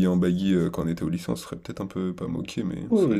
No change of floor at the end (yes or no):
no